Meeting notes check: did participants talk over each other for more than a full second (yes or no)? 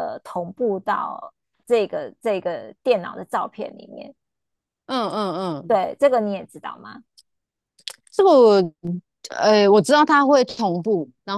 no